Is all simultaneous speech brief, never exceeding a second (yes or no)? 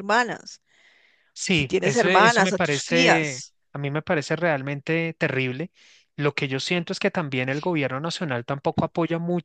no